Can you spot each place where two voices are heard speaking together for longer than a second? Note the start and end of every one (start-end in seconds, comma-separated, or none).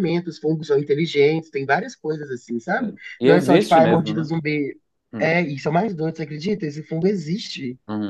2.8-4.3